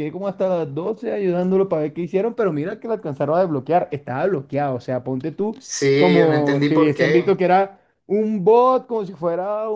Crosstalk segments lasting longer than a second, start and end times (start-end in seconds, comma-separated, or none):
5.9-7.4